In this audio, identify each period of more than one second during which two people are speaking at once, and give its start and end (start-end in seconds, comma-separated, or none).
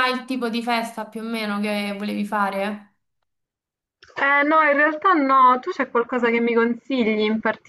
none